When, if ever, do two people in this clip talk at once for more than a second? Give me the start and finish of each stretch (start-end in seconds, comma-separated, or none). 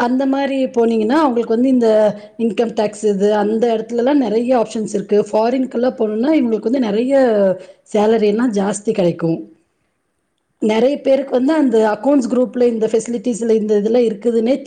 10.7-12.7